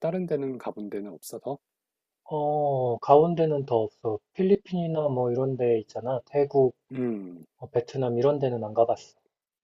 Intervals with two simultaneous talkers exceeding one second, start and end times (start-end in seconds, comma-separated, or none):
none